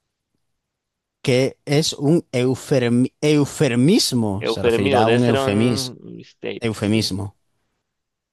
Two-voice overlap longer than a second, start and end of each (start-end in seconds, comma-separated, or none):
4.4-5.9